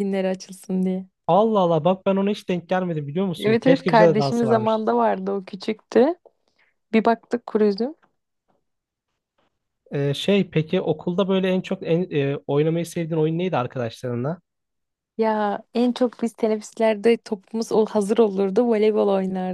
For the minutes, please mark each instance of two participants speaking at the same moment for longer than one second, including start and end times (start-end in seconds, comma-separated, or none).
3.4-4.8